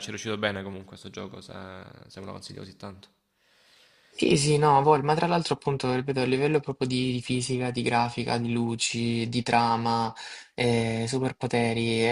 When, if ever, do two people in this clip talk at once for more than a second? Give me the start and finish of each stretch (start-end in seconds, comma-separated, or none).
none